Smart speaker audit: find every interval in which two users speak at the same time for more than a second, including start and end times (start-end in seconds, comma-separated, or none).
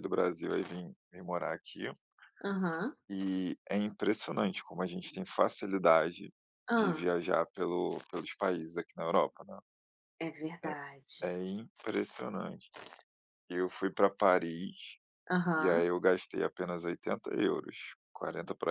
none